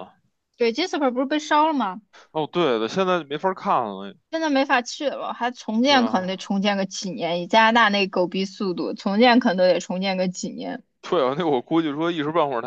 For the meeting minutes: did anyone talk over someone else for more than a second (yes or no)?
no